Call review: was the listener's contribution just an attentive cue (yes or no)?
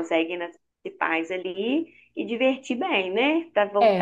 no